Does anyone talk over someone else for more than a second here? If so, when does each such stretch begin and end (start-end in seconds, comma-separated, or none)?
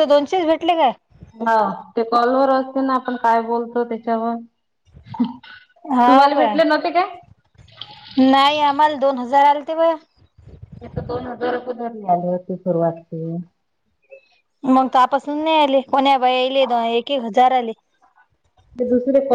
none